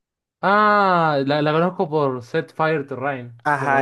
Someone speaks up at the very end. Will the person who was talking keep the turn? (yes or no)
no